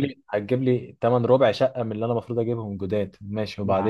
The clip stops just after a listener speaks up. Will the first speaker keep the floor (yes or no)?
no